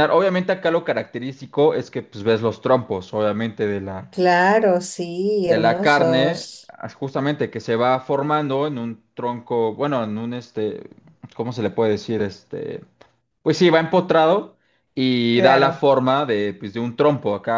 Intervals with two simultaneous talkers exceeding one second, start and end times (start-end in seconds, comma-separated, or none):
5.5-6.8